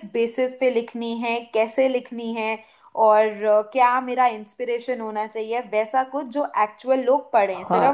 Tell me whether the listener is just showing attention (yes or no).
no